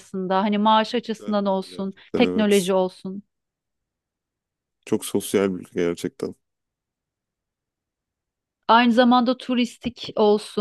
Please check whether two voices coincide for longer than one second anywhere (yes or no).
yes